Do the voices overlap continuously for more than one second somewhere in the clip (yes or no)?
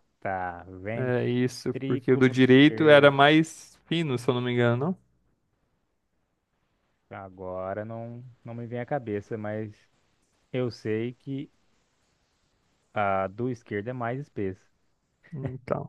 yes